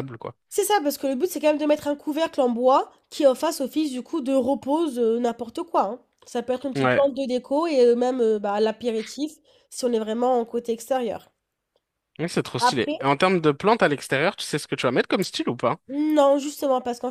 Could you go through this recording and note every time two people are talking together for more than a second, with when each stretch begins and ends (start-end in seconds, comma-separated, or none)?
none